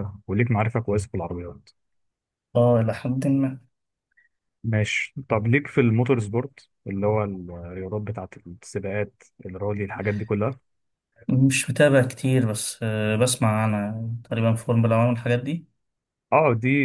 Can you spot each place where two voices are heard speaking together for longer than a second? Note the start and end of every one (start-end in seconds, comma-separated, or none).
none